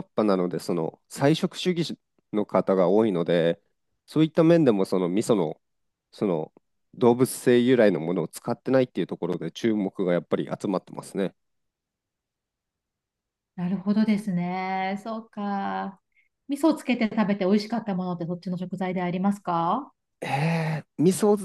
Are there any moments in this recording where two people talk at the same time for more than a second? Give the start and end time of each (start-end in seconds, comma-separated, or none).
none